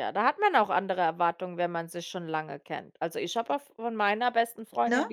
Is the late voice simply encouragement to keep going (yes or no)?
yes